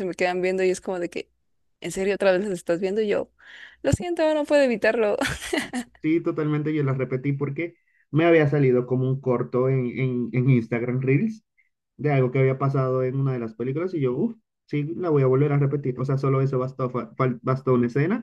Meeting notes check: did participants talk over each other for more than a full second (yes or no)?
no